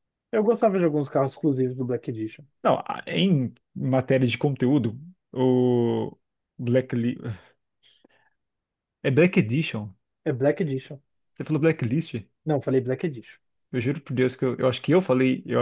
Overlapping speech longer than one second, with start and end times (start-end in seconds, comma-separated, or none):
none